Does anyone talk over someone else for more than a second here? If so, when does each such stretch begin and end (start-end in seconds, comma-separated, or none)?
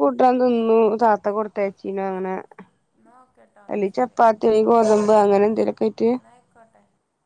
none